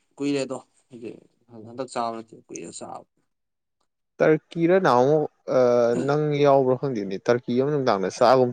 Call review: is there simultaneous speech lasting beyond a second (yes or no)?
no